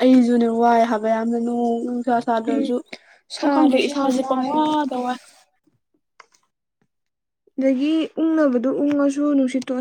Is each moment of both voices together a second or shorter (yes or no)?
no